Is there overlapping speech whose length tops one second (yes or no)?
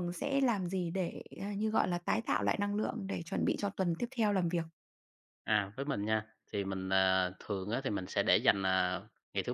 no